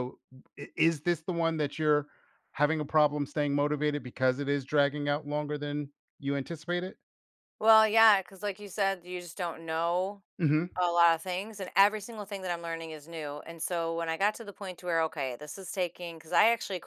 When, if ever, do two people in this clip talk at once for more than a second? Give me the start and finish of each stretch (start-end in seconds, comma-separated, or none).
none